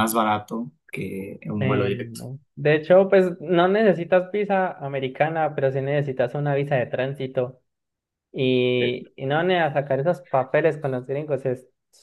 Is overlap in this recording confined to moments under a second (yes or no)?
yes